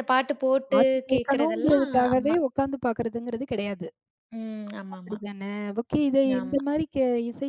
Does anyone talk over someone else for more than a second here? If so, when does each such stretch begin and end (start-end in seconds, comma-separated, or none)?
0.7-2.4